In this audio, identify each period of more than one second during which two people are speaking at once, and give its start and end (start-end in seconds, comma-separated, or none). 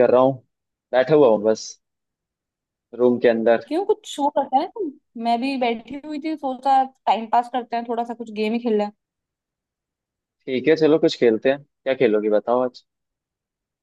none